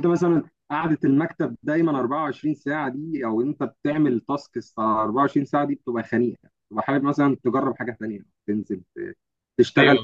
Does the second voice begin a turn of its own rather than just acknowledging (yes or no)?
yes